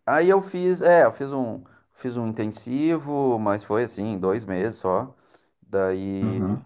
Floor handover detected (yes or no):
no